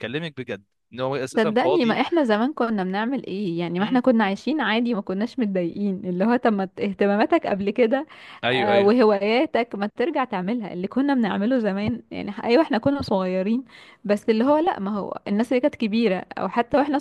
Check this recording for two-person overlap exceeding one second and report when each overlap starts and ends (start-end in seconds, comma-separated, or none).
none